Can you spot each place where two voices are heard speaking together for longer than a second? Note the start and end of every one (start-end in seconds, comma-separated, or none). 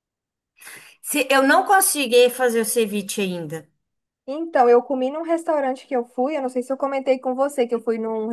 none